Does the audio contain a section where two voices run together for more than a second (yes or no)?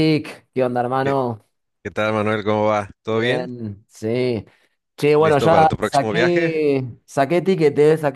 yes